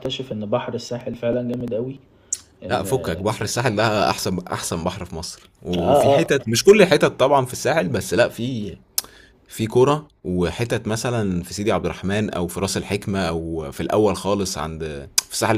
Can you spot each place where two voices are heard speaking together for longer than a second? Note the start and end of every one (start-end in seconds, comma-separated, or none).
none